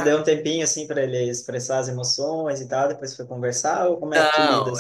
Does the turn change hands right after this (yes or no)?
yes